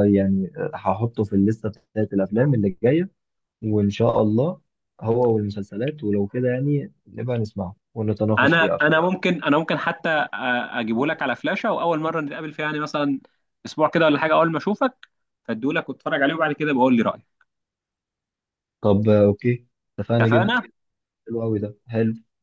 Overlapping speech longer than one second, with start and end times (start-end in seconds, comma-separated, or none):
none